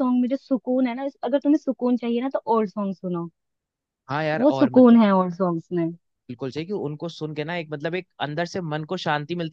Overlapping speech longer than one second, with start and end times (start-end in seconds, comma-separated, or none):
none